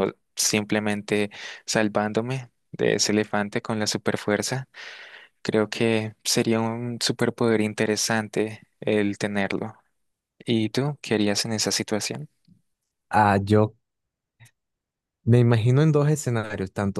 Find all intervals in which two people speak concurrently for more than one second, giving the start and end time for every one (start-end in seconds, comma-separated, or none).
none